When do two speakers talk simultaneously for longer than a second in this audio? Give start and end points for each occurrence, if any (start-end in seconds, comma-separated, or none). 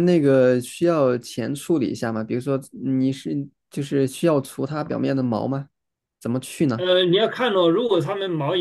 none